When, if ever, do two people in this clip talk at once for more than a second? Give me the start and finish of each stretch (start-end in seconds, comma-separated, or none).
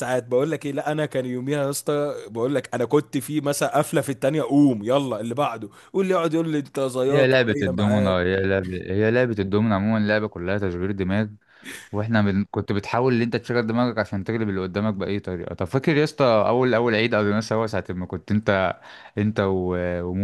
7.1-8.3